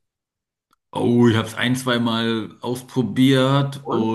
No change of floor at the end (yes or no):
yes